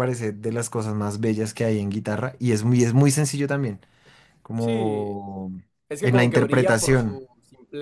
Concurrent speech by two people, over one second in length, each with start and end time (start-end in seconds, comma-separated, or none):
6.0-7.2